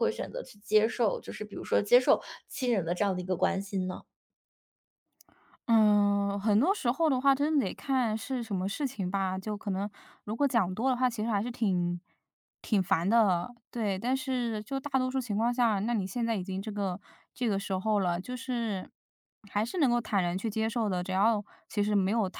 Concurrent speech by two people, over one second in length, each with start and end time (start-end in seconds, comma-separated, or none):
none